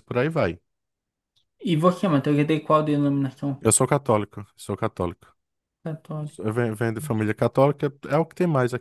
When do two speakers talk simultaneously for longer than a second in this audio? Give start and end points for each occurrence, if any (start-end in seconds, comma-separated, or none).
none